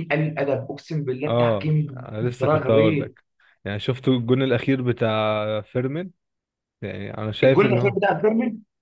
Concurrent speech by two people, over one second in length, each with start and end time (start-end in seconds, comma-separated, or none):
1.3-3.1